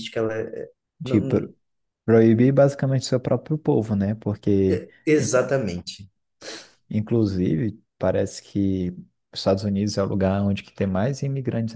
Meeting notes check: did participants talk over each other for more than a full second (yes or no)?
no